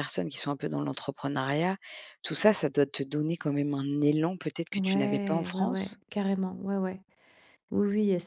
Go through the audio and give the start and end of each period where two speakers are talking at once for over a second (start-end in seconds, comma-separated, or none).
4.8-6.0